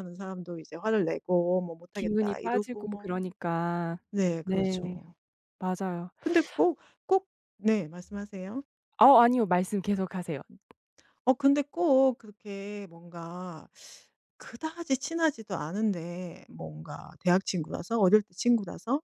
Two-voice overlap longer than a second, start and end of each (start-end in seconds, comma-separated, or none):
1.9-3.2